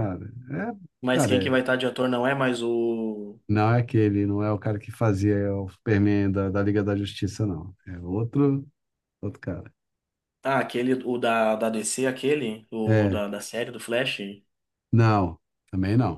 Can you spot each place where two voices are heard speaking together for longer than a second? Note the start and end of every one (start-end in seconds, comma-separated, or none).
none